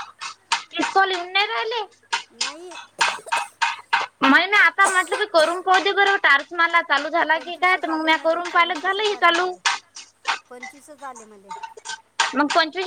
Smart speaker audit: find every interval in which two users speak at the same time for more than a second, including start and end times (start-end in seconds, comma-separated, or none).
7.3-9.5